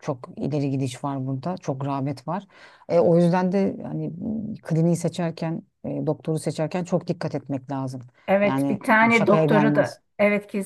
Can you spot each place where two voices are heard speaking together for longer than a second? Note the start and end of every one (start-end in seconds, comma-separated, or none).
8.4-10.0